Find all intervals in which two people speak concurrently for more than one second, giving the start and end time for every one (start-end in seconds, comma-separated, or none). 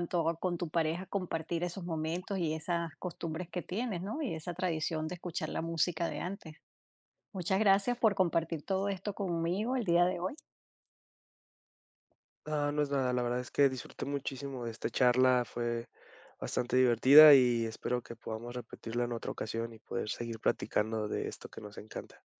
none